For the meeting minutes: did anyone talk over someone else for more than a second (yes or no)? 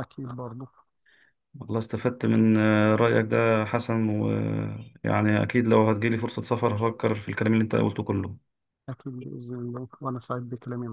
no